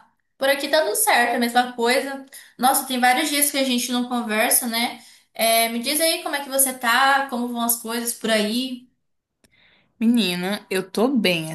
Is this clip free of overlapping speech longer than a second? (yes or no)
yes